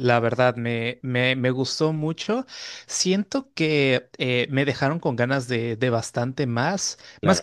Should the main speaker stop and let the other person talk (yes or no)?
no